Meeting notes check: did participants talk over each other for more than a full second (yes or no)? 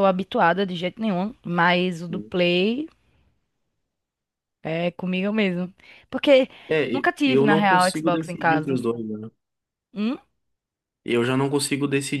yes